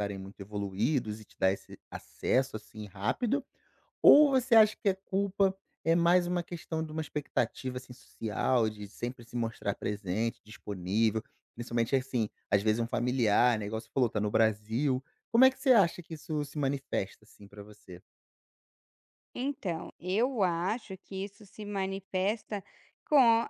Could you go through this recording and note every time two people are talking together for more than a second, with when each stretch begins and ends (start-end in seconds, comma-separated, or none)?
none